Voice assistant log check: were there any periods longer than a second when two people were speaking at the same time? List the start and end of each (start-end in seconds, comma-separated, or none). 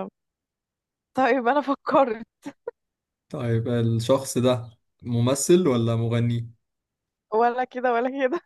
none